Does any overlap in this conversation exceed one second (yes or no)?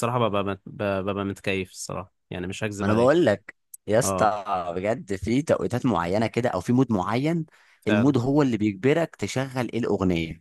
no